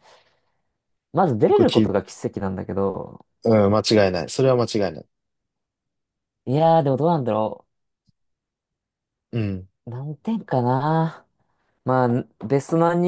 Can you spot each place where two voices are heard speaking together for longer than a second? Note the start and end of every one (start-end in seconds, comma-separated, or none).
none